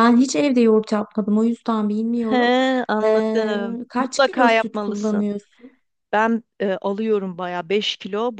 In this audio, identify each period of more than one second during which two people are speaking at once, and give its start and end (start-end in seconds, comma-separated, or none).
3.0-5.2